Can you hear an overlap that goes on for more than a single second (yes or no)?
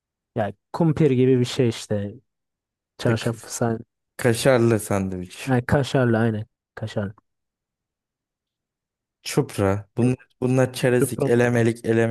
no